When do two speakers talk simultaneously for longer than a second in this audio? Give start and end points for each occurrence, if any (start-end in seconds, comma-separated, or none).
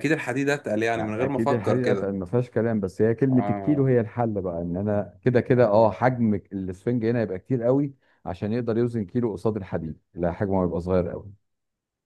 0.9-2.2